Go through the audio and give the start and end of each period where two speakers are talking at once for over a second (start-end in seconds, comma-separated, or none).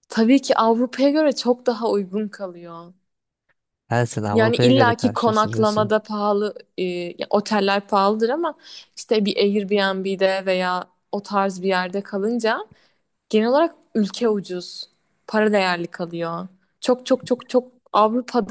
4.3-5.9